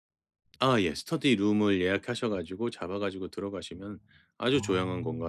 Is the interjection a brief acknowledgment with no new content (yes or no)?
yes